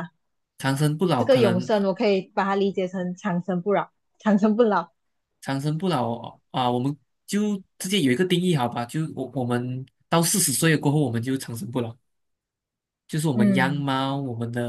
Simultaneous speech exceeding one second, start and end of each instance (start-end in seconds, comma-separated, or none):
none